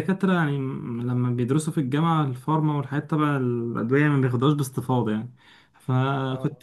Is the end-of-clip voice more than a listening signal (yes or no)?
no